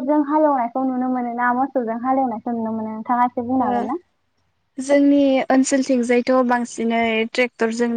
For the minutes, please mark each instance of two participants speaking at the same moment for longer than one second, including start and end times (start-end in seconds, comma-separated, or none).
none